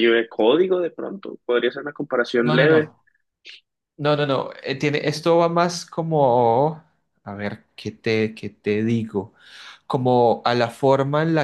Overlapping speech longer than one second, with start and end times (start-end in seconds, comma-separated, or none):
none